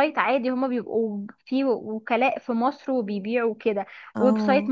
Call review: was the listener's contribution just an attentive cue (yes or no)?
yes